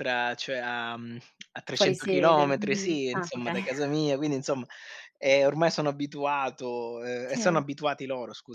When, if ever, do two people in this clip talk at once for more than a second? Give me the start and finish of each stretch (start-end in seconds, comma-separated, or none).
1.7-3.6